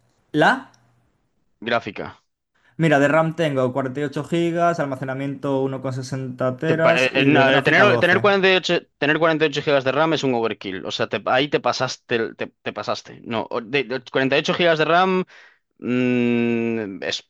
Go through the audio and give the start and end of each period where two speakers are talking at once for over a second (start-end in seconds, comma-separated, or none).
6.6-8.2